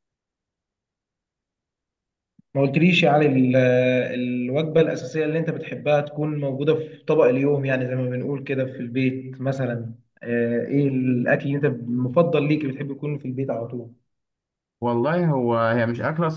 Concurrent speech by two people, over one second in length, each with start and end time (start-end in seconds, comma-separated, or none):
none